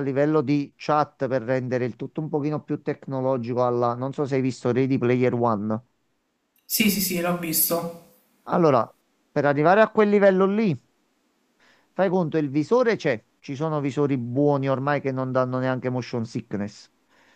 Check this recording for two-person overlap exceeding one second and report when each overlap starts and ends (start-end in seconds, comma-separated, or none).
none